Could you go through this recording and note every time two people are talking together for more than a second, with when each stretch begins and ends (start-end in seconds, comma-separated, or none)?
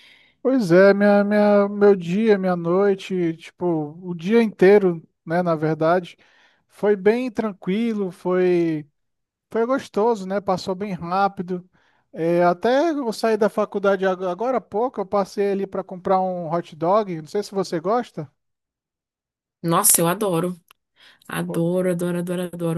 none